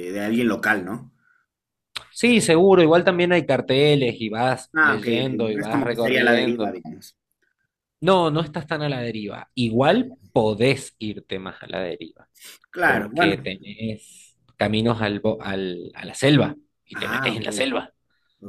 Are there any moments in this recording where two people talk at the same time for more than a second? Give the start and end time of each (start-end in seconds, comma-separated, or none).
4.7-6.7